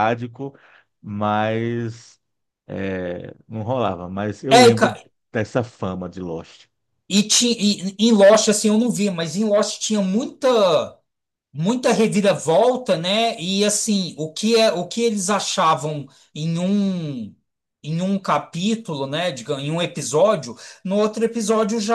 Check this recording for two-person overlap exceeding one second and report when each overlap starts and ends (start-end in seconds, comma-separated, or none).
none